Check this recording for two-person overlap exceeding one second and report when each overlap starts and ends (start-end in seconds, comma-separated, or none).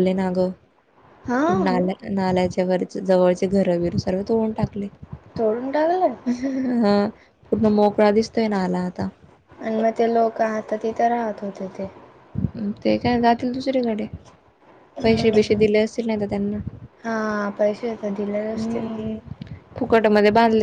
none